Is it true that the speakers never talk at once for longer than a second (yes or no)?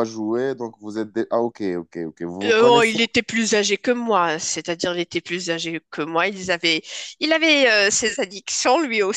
yes